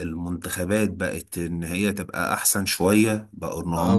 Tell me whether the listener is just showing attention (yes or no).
no